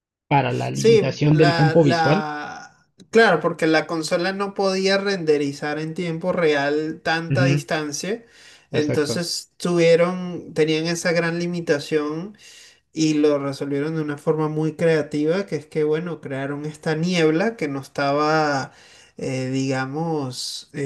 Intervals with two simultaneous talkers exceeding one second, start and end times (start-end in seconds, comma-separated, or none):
0.7-2.3